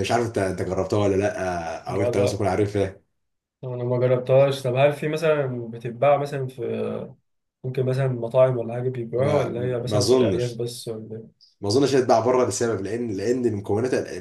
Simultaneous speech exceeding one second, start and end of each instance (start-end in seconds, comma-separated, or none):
9.2-10.6